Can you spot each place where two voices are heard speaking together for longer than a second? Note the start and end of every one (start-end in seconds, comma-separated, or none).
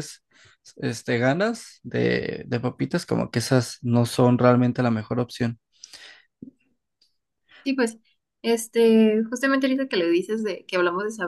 none